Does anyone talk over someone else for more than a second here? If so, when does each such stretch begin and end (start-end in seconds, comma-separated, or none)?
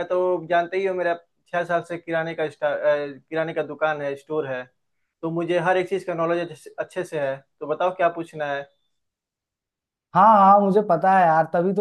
none